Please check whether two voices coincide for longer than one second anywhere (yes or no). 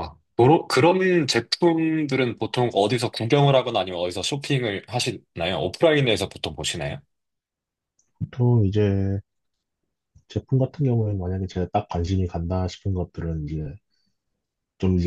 no